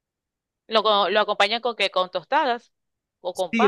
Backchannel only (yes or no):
no